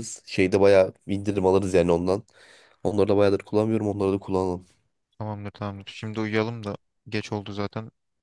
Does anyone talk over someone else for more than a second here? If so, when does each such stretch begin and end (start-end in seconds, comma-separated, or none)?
none